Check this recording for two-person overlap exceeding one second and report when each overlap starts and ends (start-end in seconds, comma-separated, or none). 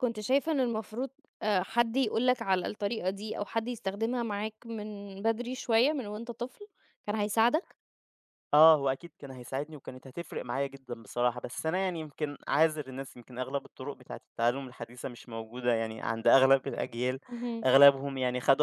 none